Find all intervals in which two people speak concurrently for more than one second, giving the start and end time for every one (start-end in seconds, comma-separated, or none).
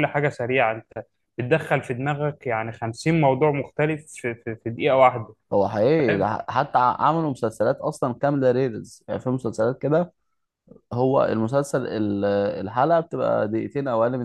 none